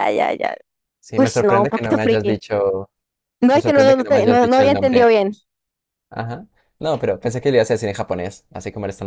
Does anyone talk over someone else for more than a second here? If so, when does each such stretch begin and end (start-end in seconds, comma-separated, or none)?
1.1-2.4, 3.5-5.2